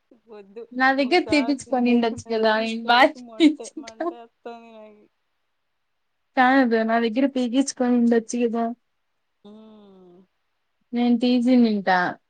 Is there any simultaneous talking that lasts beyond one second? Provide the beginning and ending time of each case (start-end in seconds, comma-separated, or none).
1.3-4.0